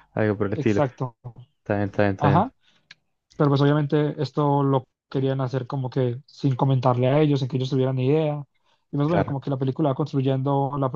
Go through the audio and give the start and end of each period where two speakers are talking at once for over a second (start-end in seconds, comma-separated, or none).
none